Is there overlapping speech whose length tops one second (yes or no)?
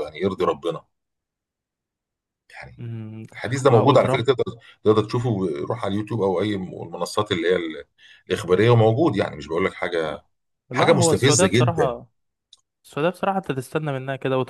yes